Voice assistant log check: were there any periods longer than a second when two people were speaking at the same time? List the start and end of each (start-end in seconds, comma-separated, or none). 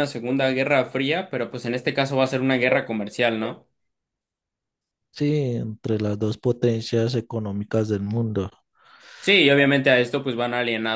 none